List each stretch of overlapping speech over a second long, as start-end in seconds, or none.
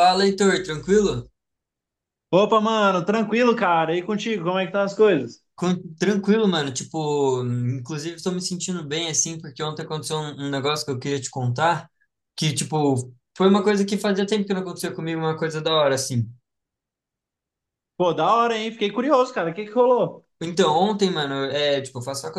none